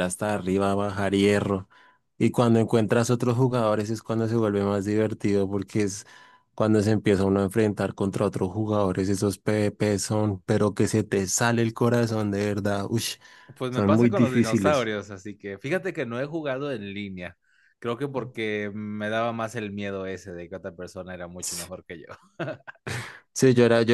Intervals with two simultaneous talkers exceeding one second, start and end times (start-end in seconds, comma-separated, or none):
13.7-14.9